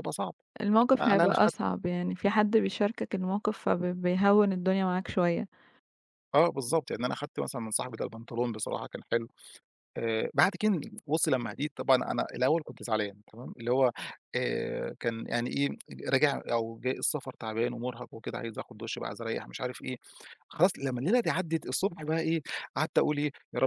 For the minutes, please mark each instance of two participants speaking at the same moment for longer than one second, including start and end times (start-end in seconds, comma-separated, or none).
none